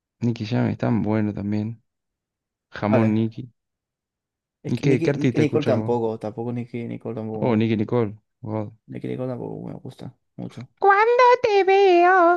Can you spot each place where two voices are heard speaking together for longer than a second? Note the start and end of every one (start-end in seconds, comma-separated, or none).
4.7-6.0